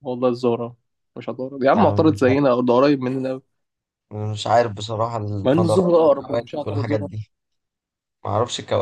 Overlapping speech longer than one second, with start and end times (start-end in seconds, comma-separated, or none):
5.5-7.1